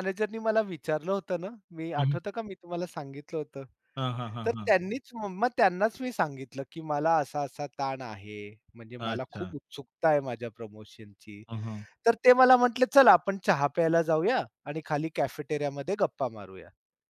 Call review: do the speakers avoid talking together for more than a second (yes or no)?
yes